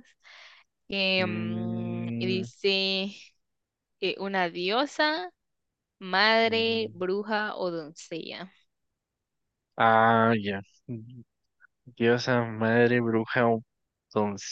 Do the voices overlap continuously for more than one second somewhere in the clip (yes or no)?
yes